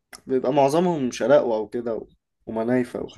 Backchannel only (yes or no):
no